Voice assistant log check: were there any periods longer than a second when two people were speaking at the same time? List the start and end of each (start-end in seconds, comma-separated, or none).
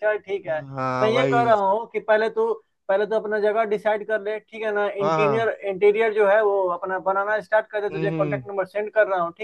none